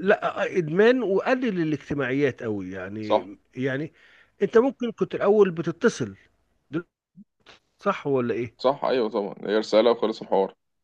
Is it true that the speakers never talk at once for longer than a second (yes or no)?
yes